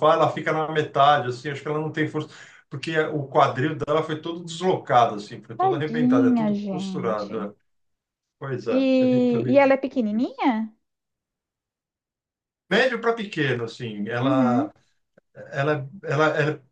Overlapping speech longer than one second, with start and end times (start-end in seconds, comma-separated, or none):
5.6-7.5, 8.7-10.4